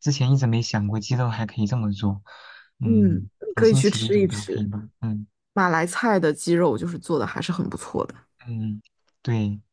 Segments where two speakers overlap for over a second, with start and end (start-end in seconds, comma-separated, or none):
2.8-4.7